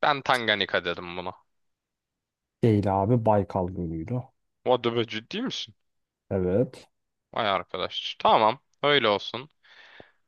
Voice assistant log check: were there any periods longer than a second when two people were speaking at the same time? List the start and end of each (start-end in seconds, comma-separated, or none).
none